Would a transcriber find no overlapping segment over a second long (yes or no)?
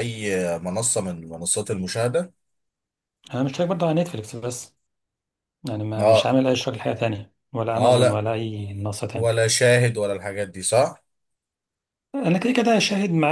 yes